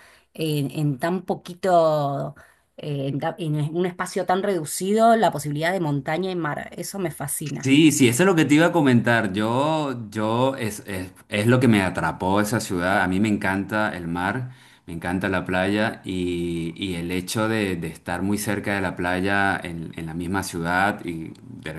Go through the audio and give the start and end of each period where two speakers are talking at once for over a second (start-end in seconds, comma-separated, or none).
none